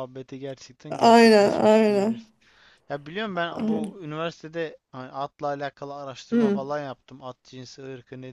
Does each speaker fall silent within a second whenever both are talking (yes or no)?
no